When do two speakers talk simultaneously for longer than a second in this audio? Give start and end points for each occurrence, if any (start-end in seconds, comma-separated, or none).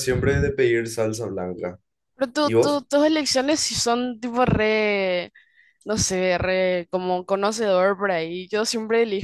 none